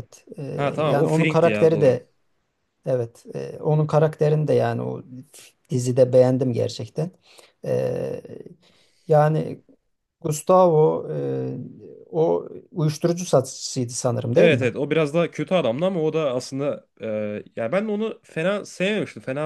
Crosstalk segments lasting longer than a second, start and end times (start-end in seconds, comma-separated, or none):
0.5-2.0